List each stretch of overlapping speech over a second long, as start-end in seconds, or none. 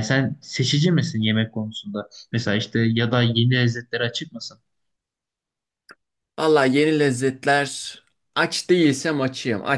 none